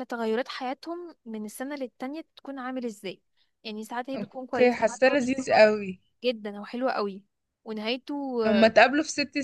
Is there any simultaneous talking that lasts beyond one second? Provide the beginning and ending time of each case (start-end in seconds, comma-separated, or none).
4.2-5.7